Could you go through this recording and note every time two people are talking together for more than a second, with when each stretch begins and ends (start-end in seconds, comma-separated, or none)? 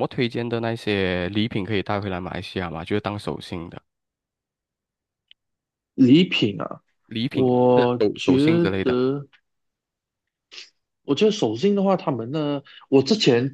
7.3-9.0